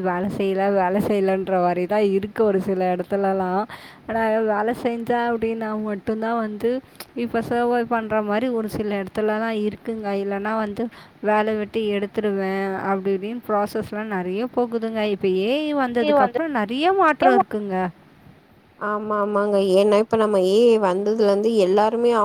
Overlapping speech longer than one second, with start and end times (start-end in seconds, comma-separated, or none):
none